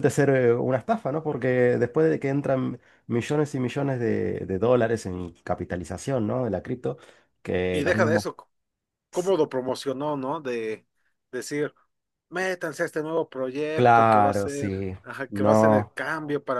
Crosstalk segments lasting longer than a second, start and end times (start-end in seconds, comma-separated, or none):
13.7-15.9